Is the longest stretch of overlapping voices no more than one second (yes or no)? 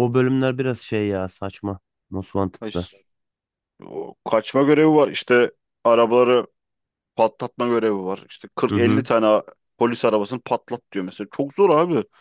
yes